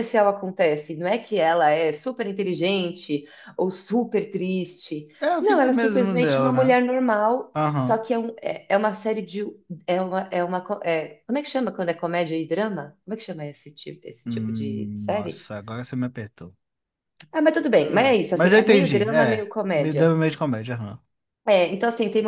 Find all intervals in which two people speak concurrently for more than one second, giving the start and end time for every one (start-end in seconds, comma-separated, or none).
5.2-6.8, 14.2-15.5, 17.8-20.1